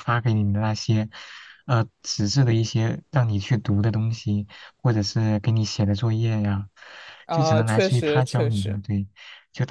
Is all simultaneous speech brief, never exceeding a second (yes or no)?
no